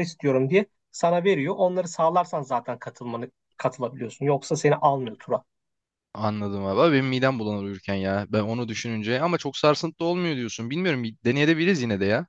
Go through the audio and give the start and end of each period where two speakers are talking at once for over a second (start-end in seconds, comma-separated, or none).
none